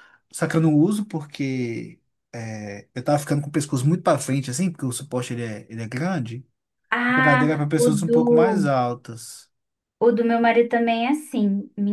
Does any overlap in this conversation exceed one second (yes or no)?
yes